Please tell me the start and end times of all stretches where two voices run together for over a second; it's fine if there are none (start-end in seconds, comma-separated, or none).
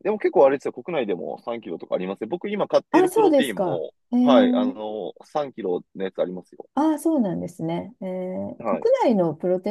2.9-4.8